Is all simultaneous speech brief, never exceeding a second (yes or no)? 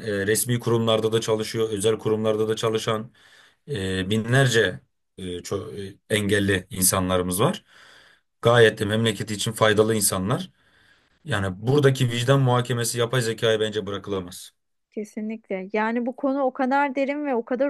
yes